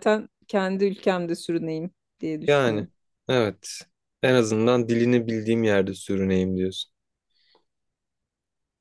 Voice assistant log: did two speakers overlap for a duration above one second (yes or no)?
no